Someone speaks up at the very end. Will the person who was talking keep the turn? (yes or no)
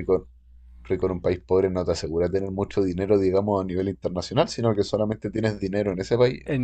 no